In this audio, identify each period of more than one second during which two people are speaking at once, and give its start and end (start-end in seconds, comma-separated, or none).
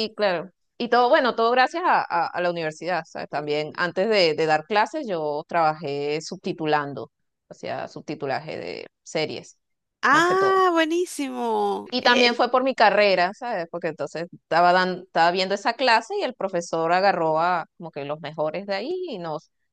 none